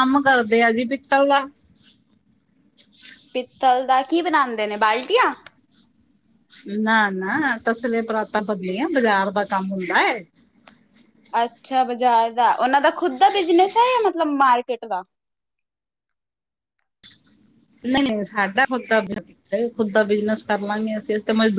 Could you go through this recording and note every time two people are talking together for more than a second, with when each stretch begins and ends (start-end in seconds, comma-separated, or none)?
none